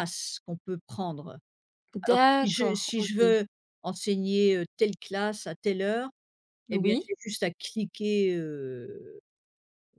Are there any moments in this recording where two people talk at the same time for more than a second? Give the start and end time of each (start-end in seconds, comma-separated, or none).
2.0-3.4